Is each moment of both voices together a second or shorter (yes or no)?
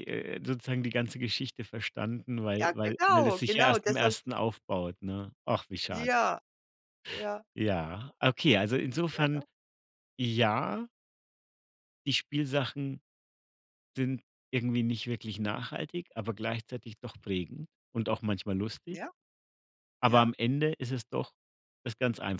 no